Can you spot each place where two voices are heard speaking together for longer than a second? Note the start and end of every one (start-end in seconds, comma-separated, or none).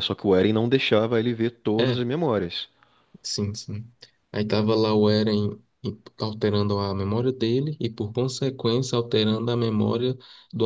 none